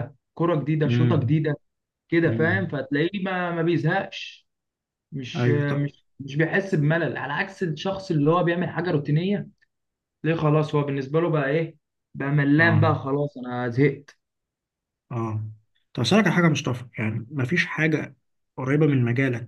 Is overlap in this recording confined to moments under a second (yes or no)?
yes